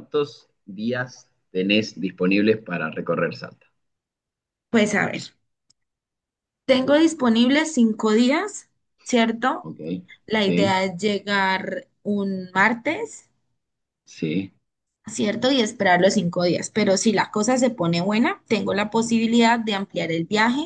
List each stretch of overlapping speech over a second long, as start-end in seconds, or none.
none